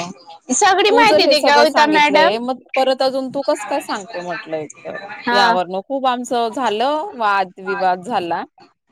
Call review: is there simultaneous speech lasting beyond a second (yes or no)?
yes